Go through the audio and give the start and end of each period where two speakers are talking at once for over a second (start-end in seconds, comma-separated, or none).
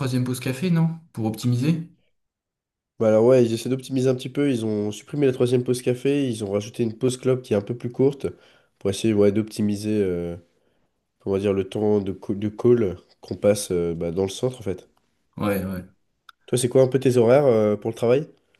none